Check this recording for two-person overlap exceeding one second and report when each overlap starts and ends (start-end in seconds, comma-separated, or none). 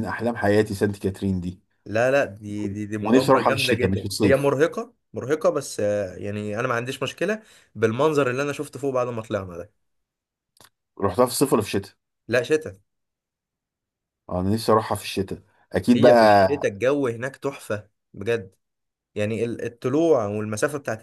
3.0-4.5